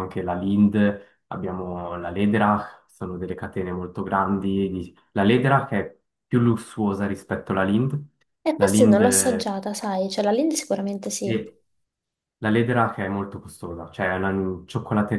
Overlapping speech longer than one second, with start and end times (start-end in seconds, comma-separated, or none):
none